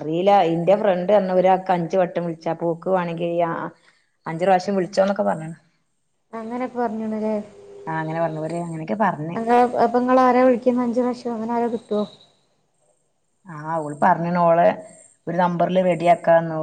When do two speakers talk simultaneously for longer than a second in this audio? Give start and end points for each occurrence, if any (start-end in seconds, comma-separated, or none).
none